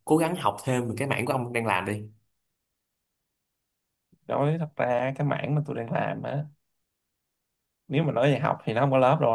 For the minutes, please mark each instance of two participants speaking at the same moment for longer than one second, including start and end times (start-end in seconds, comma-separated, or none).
none